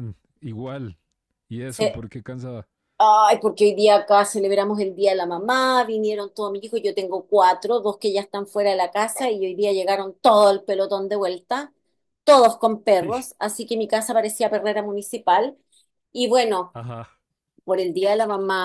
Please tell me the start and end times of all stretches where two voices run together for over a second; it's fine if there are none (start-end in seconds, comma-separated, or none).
none